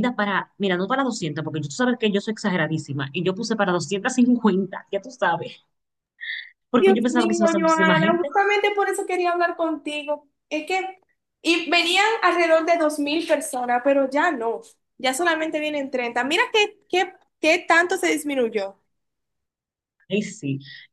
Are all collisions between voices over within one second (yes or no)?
no